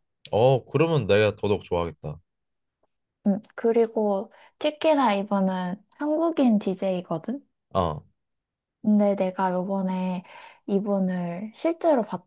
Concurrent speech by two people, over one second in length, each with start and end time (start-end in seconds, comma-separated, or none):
none